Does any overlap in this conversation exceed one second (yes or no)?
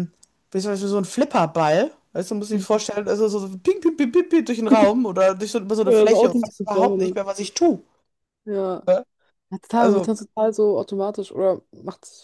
yes